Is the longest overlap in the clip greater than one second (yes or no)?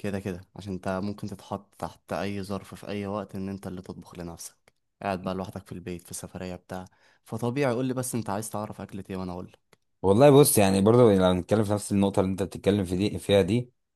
no